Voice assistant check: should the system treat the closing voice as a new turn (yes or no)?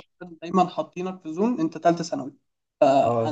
yes